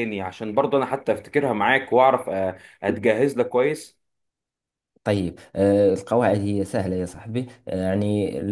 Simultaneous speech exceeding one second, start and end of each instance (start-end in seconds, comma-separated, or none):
none